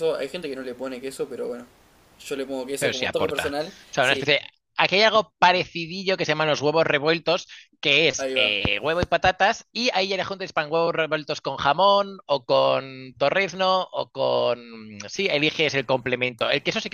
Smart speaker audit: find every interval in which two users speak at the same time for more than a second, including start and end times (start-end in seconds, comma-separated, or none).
2.8-4.4